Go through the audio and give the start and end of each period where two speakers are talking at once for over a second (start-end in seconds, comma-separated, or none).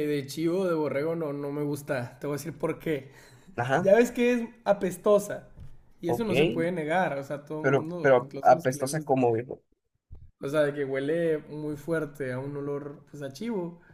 7.6-9.2